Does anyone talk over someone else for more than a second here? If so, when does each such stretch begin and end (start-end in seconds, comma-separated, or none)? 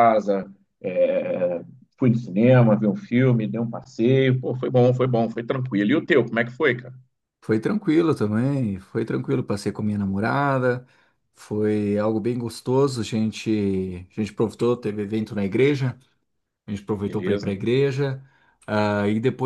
none